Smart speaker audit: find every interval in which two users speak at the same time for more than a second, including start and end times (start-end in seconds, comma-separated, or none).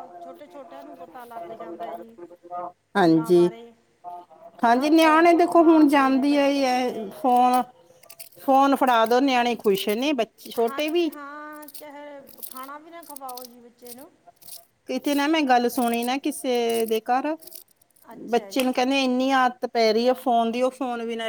4.8-7.2